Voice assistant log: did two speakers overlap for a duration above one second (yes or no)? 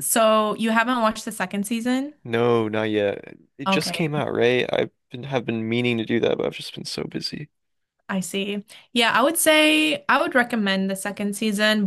no